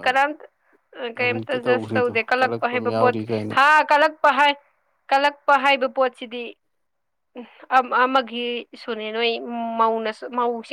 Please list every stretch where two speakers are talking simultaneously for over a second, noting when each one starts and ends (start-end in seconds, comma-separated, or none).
1.1-3.5